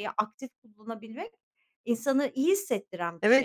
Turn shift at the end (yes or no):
yes